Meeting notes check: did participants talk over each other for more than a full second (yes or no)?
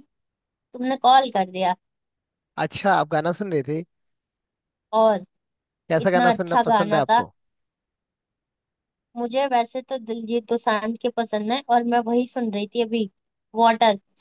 yes